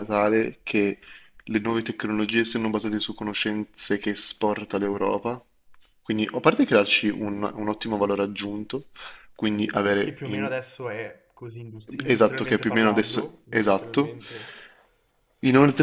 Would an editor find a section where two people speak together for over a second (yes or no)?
yes